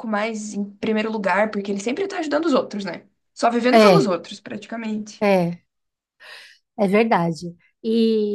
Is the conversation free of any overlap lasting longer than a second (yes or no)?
yes